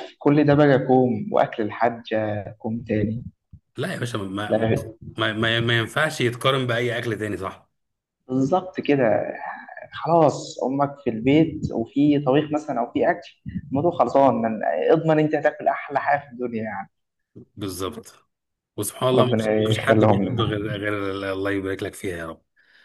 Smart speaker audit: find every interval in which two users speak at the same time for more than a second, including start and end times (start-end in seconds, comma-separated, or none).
19.1-20.6